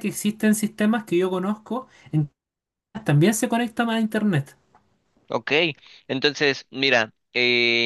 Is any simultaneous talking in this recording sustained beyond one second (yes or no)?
no